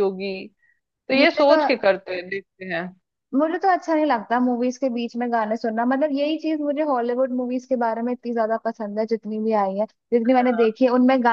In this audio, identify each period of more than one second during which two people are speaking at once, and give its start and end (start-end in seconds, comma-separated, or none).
none